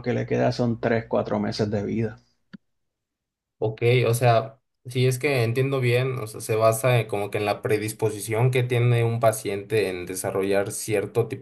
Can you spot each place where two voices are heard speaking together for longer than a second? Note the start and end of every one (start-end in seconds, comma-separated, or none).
none